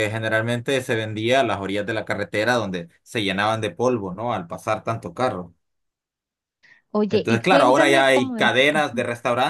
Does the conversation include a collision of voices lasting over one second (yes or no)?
yes